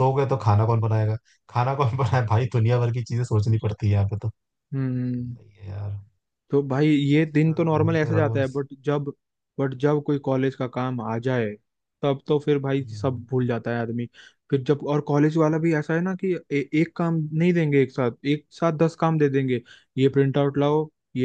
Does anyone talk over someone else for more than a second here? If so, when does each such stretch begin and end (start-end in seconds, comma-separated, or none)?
7.1-8.6